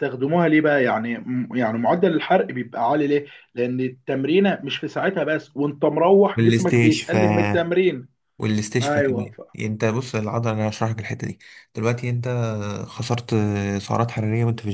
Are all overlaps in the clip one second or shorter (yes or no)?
no